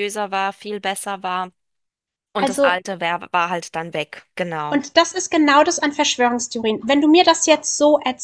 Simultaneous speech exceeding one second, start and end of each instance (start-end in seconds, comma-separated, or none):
none